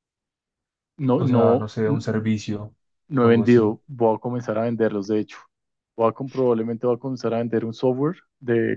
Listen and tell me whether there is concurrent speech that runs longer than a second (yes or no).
yes